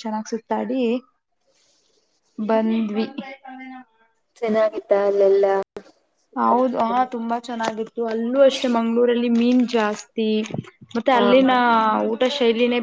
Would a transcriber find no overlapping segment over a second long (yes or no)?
yes